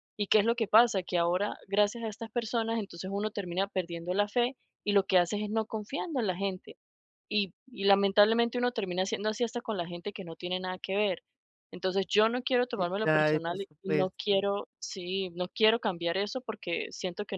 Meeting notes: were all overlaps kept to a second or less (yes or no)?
no